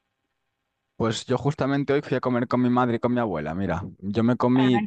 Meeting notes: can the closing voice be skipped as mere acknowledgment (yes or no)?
yes